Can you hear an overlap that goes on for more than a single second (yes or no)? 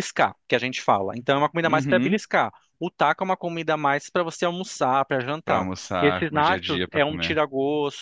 yes